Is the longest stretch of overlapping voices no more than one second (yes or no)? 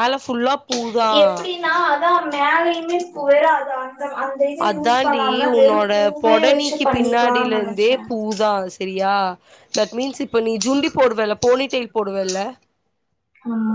no